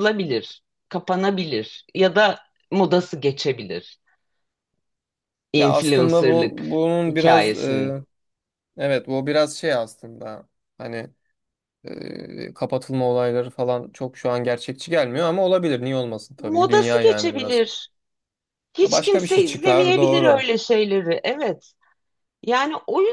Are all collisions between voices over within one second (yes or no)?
no